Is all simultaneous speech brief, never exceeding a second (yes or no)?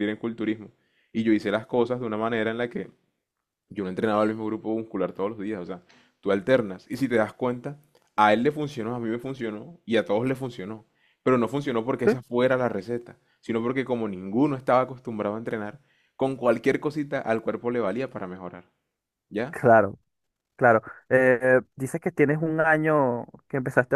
yes